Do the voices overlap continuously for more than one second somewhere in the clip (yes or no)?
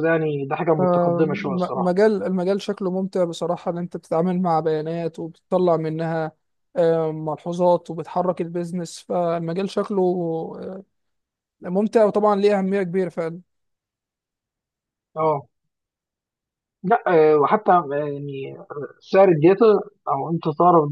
yes